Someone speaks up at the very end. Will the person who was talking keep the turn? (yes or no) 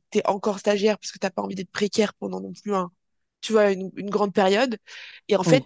yes